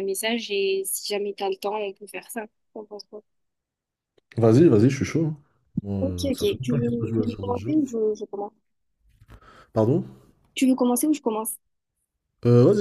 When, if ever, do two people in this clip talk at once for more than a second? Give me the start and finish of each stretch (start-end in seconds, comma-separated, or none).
6.0-7.7